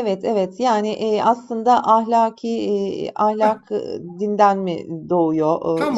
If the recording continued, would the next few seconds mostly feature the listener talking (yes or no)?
yes